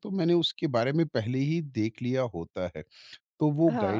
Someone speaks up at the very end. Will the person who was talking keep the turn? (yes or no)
yes